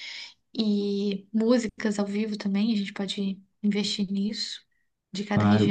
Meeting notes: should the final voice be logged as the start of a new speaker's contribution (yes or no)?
yes